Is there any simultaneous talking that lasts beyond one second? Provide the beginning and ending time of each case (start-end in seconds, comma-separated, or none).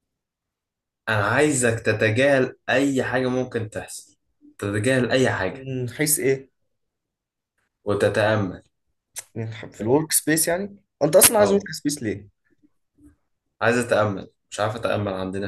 none